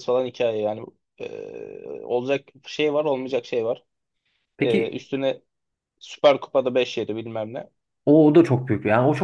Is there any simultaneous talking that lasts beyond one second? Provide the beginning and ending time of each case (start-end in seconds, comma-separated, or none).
none